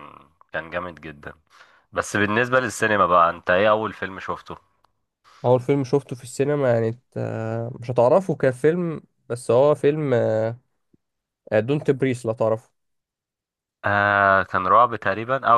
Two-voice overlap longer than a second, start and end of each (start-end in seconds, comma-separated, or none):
none